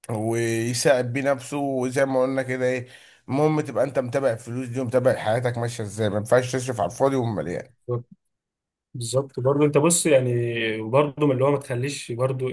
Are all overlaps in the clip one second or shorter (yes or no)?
yes